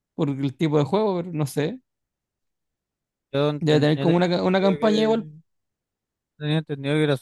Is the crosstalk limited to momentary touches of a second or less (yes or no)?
no